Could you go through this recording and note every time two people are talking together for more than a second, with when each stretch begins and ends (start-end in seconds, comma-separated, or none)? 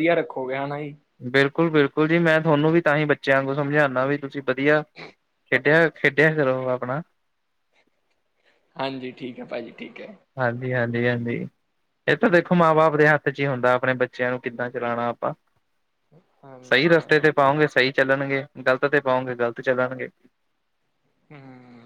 none